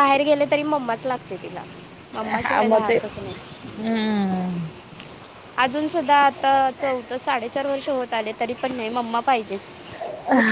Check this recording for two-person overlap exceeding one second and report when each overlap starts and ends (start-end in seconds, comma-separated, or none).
none